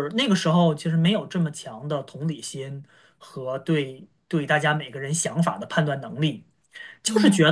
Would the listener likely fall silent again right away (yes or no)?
yes